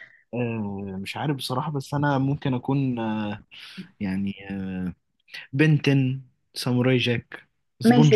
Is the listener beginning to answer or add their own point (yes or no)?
yes